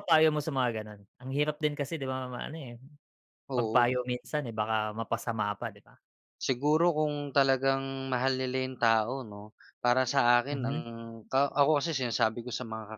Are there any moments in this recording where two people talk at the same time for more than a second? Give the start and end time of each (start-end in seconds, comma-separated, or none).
none